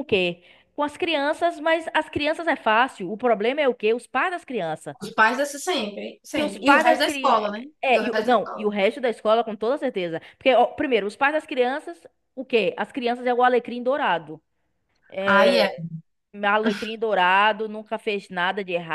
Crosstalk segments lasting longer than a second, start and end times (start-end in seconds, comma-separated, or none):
6.3-8.7